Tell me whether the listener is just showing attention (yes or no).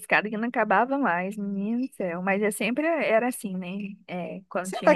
no